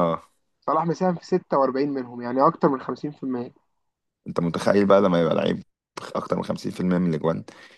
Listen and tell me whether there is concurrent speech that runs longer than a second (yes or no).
no